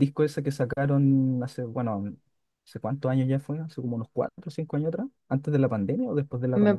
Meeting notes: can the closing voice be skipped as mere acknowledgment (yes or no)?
no